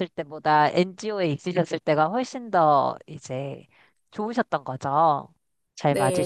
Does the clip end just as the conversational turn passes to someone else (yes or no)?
yes